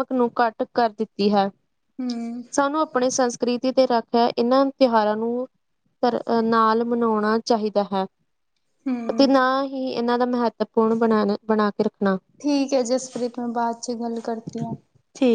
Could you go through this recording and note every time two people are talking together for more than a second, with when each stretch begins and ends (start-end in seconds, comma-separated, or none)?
none